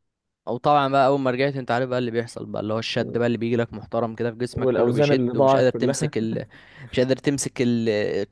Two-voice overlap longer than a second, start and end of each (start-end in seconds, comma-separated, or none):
4.5-6.1